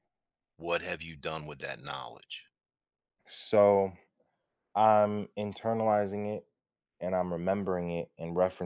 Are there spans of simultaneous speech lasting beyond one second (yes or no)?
no